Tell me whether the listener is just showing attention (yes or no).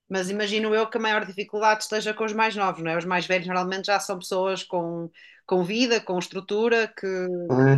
no